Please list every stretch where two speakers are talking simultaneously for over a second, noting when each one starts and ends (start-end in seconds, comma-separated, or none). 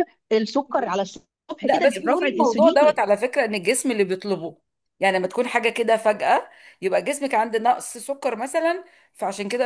1.6-3.2